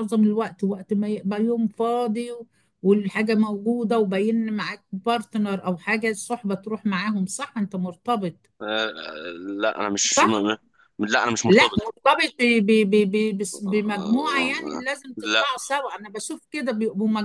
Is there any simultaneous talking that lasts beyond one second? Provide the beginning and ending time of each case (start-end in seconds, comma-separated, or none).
13.7-15.4